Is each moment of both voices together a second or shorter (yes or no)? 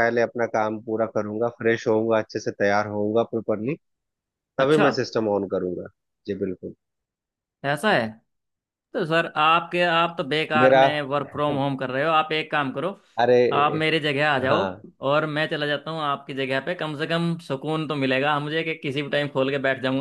yes